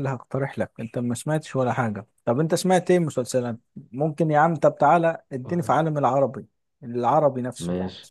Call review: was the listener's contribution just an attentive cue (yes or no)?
no